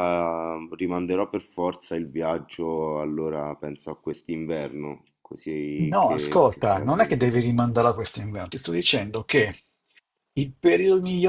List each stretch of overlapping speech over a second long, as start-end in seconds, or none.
5.8-7.2